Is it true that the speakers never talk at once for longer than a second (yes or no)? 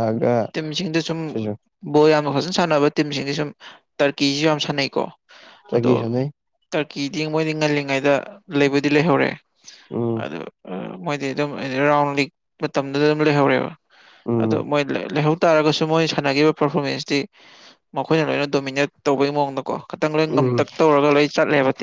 yes